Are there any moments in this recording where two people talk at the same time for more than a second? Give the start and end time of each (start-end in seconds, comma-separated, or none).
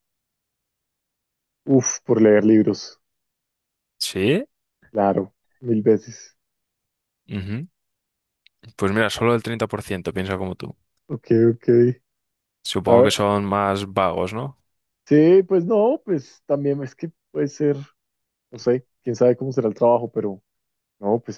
none